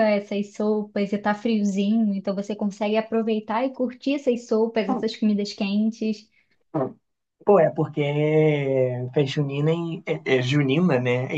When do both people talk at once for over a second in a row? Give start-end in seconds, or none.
none